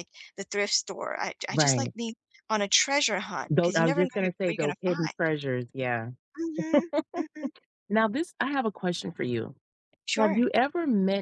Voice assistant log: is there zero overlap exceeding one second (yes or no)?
no